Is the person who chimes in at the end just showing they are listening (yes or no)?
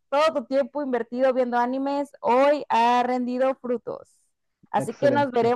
yes